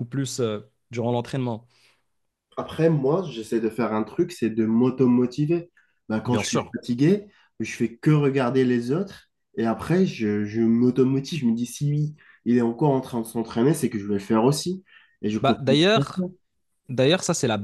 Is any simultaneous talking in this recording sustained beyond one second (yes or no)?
no